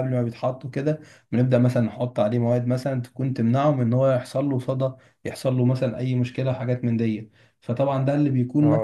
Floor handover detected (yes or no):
yes